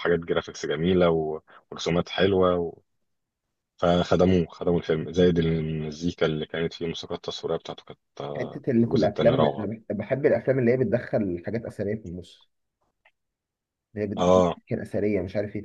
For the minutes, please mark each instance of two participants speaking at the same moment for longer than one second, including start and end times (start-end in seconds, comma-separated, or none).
8.4-9.7